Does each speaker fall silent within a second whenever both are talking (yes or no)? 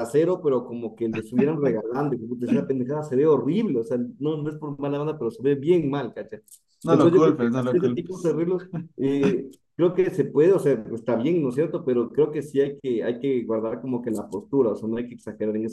no